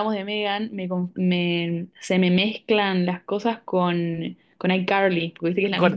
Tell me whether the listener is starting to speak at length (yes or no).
yes